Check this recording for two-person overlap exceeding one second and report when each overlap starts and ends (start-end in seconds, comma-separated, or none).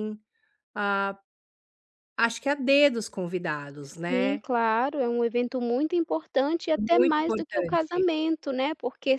6.8-8.1